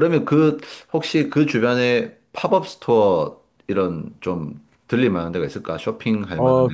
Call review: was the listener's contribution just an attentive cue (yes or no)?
no